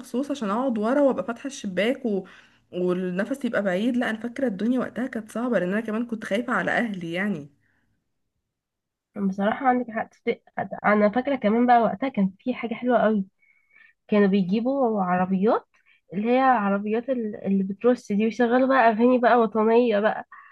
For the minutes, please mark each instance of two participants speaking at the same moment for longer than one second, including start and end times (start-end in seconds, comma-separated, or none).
none